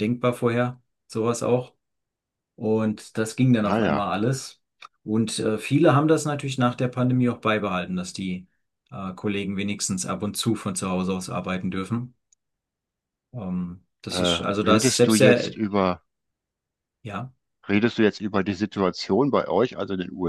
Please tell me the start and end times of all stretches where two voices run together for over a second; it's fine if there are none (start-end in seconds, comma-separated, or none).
14.1-15.6